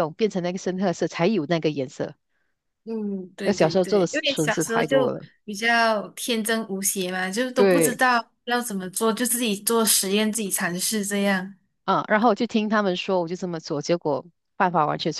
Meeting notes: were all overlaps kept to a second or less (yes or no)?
no